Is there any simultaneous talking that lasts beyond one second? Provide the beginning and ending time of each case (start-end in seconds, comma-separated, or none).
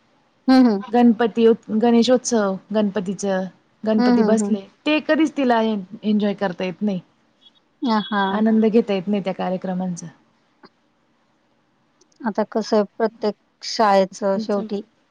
none